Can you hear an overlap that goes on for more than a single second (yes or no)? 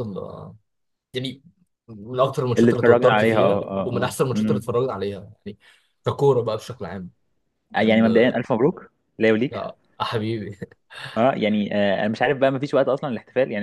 yes